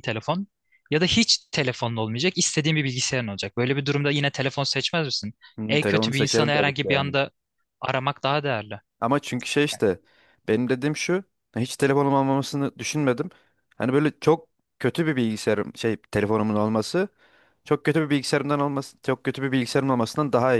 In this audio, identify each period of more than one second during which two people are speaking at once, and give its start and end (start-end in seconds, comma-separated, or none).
5.7-7.1